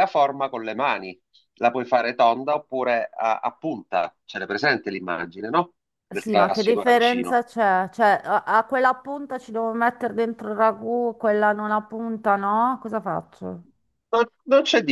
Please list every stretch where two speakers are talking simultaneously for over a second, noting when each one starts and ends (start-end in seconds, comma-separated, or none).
6.1-7.4